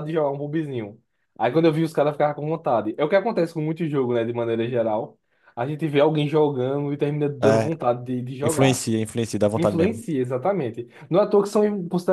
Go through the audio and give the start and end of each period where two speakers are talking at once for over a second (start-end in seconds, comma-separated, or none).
none